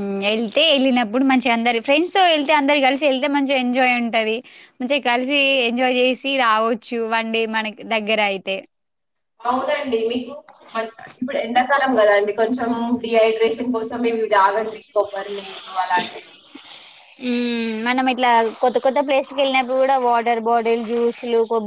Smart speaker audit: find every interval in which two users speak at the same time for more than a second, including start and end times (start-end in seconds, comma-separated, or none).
none